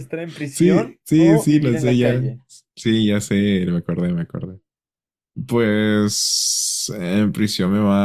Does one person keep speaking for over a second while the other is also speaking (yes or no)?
yes